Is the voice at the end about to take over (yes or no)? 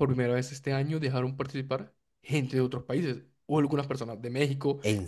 no